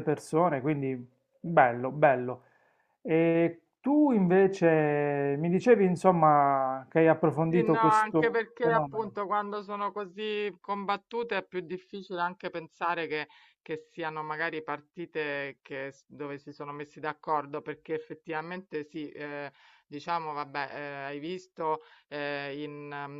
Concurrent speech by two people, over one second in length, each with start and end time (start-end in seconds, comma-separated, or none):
7.5-9.1